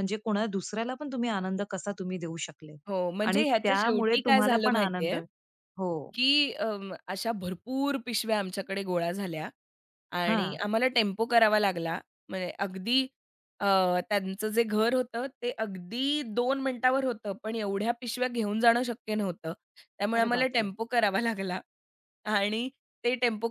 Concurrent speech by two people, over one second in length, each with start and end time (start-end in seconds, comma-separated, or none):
3.3-5.2